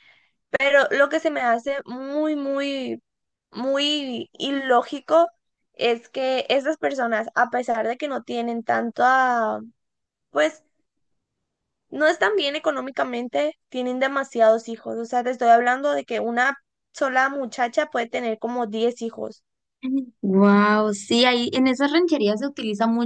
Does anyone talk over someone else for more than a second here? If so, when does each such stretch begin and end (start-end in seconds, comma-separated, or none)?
none